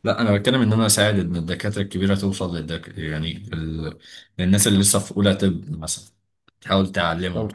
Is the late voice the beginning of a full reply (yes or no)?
no